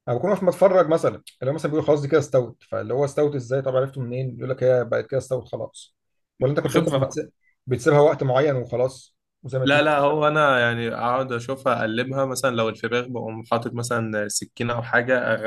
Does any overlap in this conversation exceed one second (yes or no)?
no